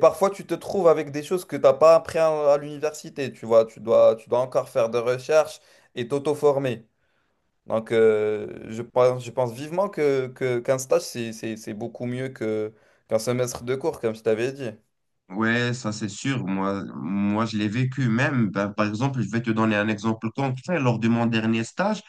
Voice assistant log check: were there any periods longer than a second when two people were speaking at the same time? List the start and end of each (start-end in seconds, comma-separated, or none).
none